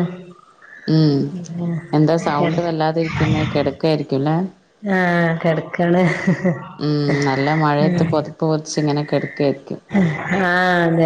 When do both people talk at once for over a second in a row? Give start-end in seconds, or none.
none